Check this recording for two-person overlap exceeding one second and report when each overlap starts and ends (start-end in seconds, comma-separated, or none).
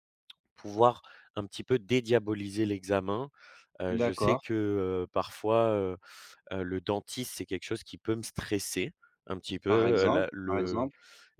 9.7-10.9